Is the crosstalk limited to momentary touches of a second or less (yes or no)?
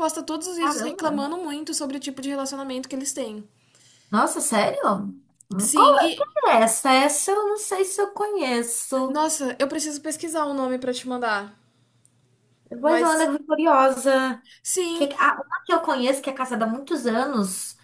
yes